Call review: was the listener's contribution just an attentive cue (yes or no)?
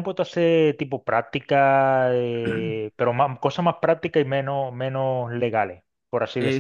no